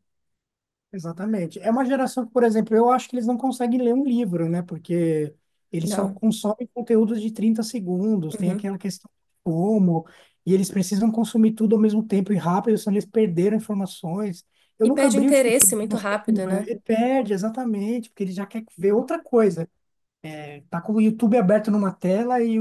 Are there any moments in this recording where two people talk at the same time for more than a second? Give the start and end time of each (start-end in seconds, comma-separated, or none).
14.8-16.7